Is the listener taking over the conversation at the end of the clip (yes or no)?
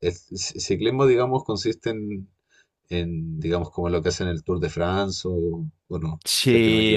yes